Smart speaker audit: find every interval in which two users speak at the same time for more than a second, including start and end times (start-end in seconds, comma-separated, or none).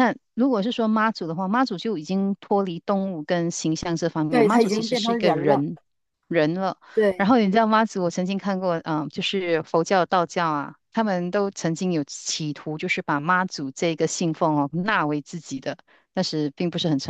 4.3-5.6